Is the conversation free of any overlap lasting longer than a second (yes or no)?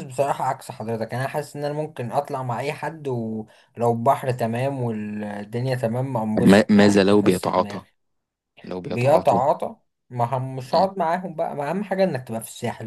no